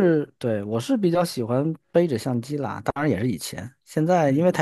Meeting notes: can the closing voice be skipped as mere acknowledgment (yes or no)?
yes